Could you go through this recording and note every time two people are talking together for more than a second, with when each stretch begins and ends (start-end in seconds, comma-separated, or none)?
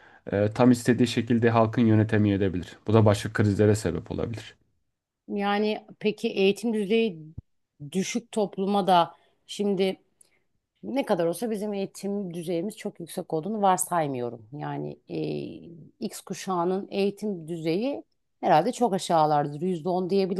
none